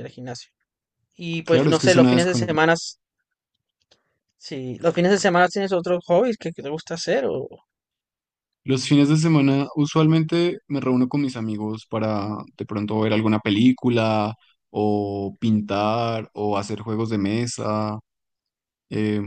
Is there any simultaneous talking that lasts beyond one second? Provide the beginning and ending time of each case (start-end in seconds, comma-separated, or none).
1.4-2.7